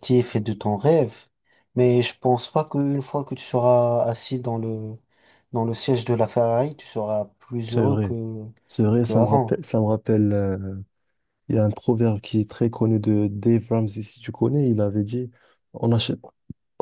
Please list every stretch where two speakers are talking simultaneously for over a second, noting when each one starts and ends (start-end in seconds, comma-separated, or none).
none